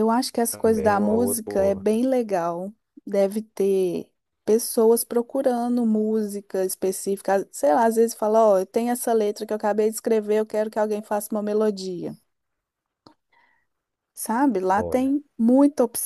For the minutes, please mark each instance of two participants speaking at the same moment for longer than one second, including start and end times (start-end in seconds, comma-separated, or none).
0.5-1.9